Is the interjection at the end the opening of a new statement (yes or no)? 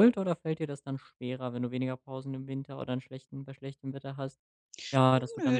yes